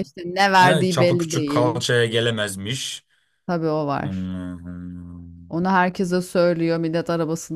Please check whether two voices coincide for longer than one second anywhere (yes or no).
yes